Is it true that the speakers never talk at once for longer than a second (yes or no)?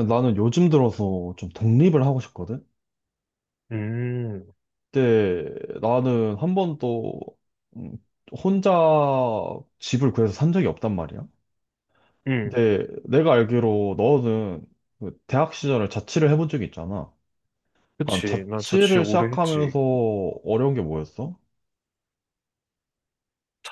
no